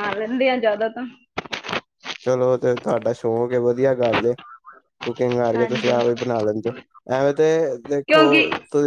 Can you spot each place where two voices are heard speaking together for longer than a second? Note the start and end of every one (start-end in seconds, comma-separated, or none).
none